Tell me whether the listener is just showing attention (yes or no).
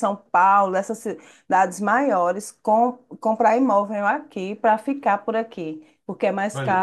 yes